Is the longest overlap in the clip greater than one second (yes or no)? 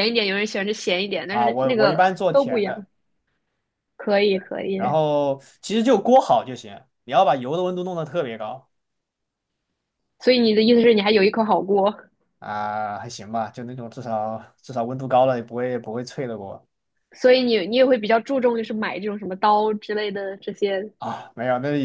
yes